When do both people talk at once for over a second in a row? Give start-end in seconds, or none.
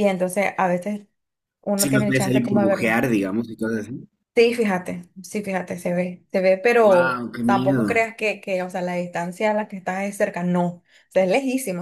1.8-3.0, 6.8-8.0